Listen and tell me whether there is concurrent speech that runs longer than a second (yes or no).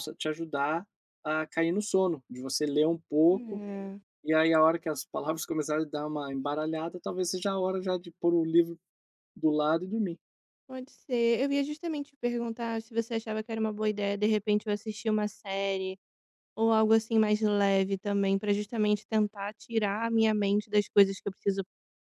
no